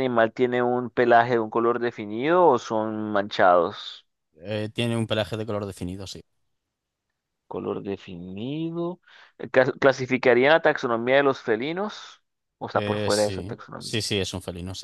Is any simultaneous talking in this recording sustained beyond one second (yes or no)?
yes